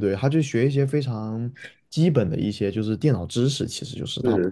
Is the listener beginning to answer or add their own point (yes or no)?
yes